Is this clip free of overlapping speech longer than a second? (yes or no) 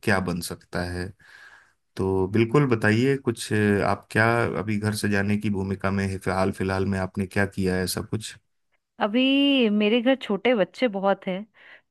yes